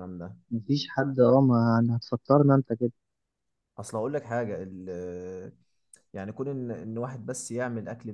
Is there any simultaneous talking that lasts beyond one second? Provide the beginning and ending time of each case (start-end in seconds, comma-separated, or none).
none